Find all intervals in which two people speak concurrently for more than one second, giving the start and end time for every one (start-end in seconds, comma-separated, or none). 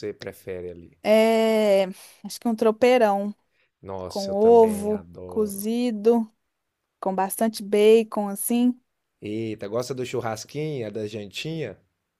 4.1-5.6